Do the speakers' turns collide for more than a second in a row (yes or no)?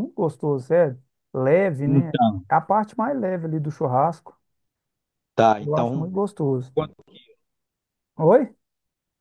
no